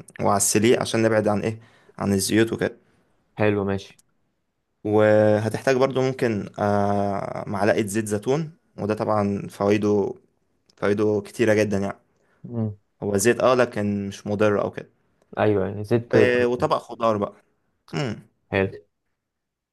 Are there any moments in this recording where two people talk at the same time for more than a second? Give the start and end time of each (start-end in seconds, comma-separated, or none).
none